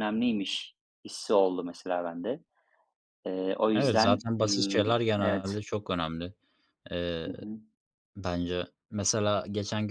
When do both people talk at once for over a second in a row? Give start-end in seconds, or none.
3.7-5.5